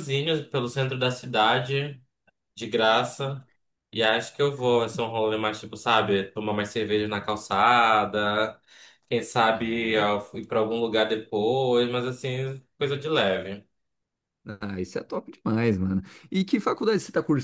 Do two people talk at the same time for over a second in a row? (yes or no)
no